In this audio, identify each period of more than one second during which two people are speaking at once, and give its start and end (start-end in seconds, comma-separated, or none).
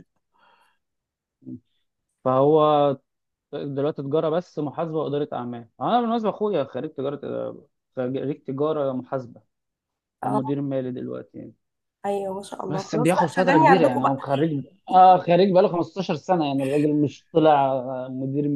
12.7-14.2